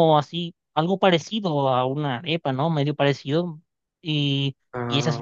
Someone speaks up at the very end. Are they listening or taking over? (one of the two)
listening